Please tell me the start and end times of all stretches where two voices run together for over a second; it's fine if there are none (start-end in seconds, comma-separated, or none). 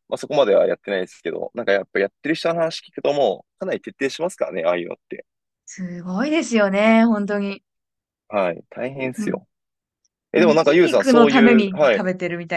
10.3-12.0